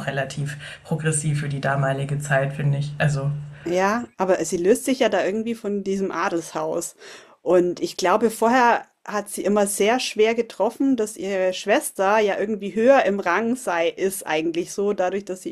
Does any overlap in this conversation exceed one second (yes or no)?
no